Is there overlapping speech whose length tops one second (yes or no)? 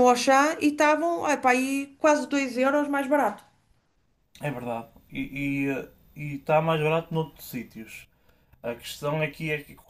no